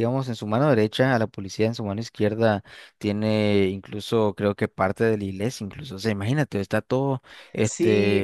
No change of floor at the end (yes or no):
no